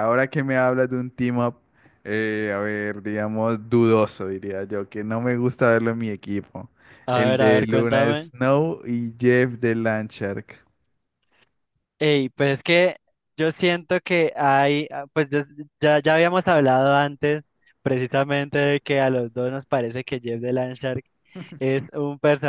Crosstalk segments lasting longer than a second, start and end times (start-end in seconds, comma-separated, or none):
7.1-8.3